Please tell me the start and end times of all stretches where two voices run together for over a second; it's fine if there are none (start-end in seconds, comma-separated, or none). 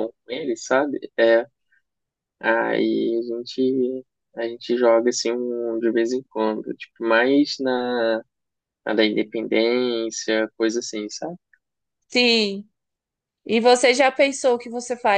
none